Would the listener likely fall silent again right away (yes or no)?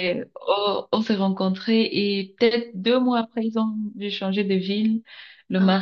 yes